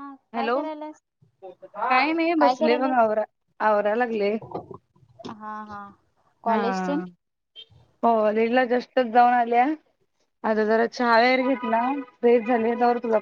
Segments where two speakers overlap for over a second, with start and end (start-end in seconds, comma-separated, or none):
none